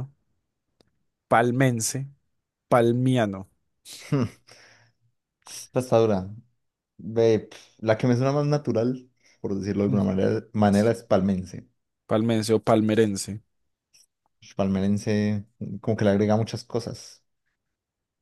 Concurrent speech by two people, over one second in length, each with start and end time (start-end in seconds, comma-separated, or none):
none